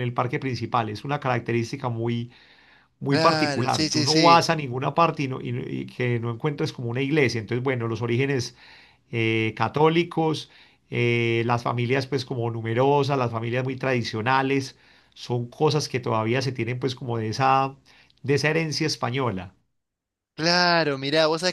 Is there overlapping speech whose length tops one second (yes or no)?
yes